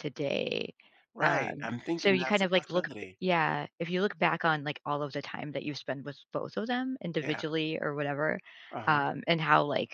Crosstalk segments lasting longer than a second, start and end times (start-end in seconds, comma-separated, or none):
1.2-3.2